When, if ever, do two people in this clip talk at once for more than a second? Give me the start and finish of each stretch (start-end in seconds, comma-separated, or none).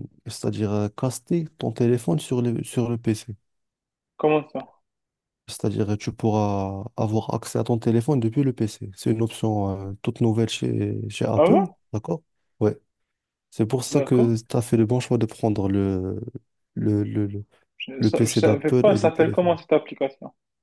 18.0-19.6